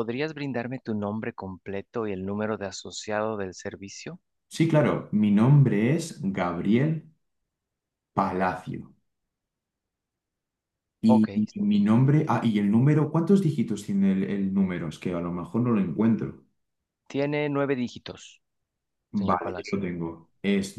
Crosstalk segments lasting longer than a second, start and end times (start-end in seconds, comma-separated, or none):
none